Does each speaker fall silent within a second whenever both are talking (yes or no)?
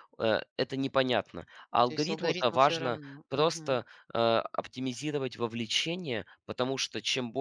no